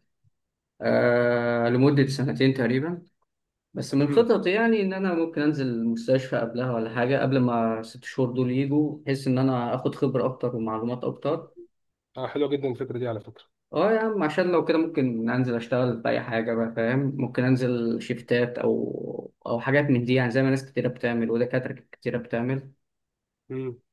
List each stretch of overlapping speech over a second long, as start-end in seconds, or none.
none